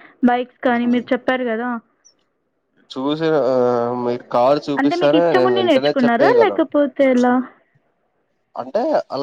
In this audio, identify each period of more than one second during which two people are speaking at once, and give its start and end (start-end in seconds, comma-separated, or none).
4.8-6.7